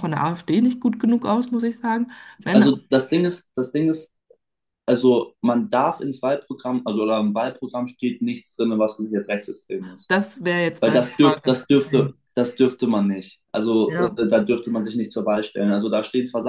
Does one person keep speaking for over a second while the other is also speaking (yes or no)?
yes